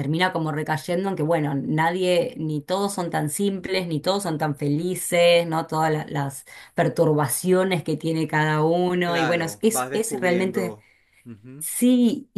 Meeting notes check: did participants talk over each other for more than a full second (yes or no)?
yes